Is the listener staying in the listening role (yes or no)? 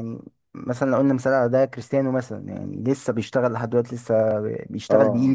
no